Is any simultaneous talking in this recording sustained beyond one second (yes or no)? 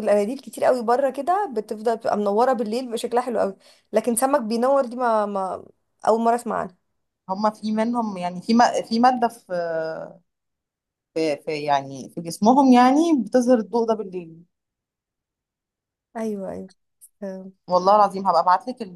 no